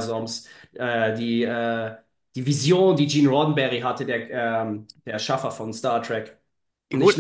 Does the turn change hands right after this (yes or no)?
yes